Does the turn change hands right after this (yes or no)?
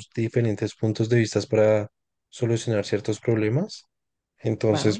no